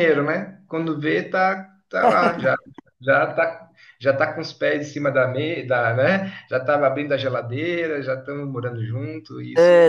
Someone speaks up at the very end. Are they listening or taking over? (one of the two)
taking over